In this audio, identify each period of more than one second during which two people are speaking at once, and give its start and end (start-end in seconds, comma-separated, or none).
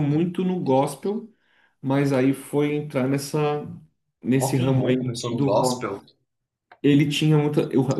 4.4-6.0